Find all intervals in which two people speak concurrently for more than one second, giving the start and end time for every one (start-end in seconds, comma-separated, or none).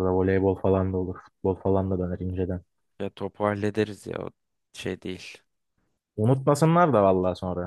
none